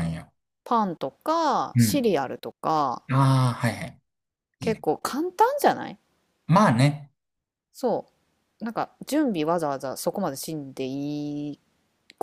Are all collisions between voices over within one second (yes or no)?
yes